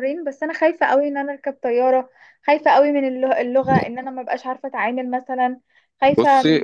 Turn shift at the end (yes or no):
yes